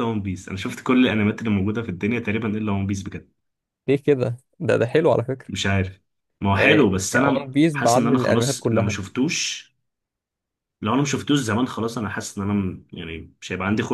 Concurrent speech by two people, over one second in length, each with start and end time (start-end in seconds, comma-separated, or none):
6.5-9.0